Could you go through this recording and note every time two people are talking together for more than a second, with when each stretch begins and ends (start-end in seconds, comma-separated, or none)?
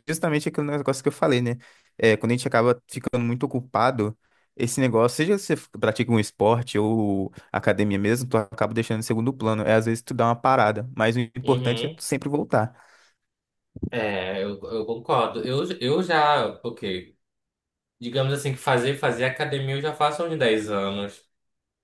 none